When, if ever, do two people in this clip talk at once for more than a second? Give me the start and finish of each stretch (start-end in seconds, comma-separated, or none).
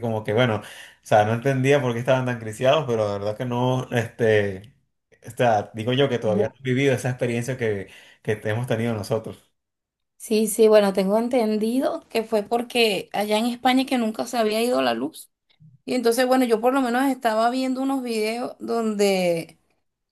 none